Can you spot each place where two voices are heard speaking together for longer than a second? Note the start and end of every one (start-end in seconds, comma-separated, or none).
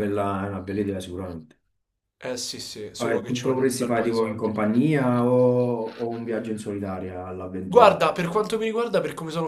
3.0-4.5